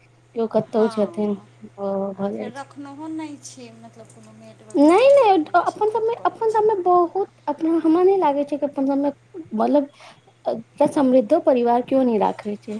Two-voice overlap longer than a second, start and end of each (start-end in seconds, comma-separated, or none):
4.8-6.6